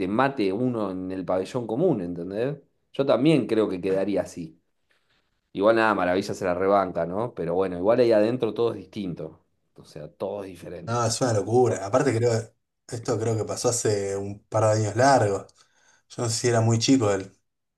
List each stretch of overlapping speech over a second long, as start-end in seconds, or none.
none